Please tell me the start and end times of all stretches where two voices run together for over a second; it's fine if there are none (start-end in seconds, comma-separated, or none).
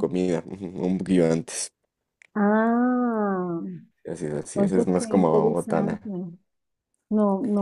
4.5-6.0